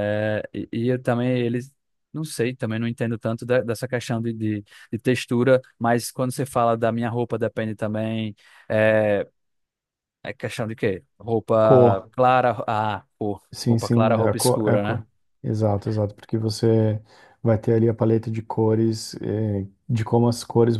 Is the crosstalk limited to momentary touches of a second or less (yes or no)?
no